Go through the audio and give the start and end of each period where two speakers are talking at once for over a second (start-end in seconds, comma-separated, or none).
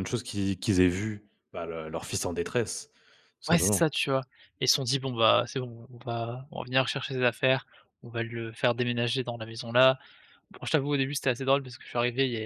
none